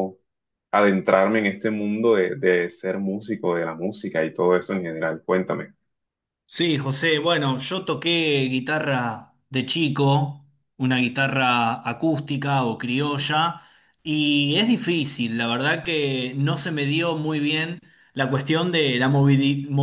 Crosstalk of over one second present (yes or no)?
no